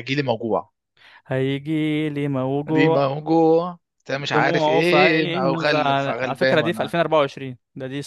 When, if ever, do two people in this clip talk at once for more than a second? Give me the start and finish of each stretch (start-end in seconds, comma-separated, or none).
4.1-6.9